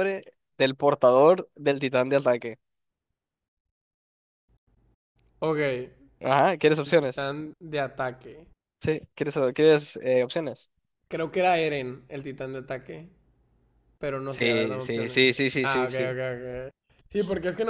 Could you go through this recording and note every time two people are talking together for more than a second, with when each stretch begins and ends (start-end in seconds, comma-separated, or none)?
14.3-16.1